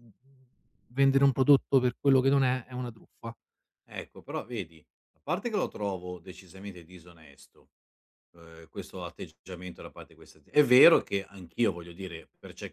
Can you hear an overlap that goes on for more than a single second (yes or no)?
no